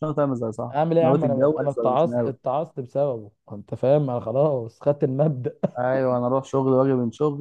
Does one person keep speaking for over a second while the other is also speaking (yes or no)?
yes